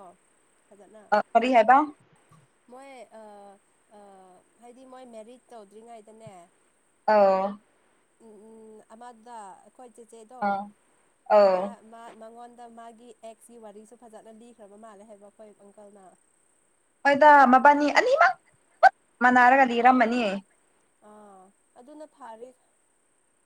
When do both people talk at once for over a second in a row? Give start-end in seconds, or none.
none